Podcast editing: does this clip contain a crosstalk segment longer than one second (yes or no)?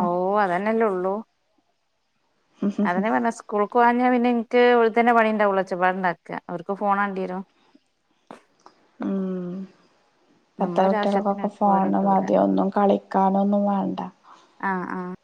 yes